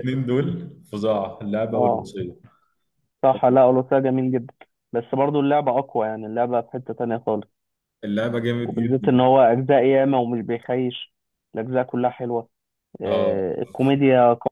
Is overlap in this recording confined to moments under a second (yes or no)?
yes